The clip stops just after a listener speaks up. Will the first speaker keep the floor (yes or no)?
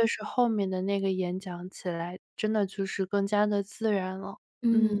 no